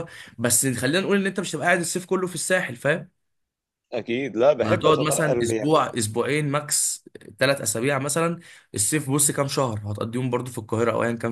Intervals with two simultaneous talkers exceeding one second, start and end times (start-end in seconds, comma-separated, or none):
4.6-5.9